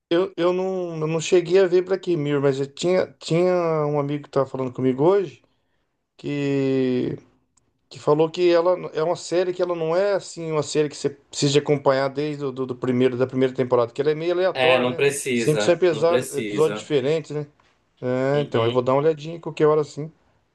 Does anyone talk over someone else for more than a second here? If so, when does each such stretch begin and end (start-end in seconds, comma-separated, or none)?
14.5-16.9